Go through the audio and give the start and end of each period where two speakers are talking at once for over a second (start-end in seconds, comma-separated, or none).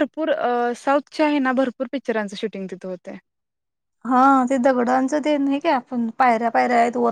none